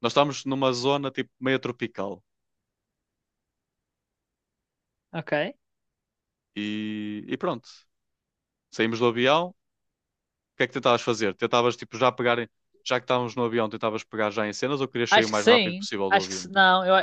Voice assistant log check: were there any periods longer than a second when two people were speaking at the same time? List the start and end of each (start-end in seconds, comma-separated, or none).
15.1-16.5